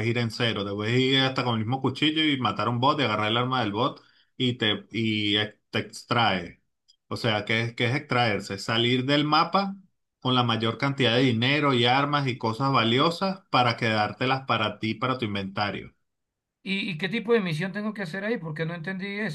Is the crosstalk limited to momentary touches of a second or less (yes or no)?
yes